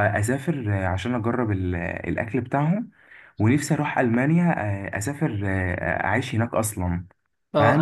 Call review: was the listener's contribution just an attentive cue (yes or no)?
no